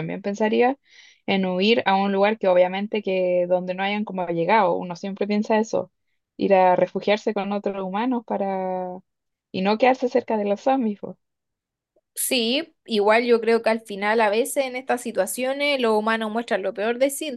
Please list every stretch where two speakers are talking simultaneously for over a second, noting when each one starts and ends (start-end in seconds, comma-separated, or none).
none